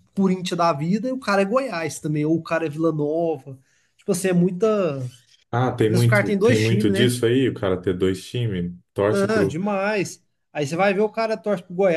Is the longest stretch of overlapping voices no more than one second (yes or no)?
no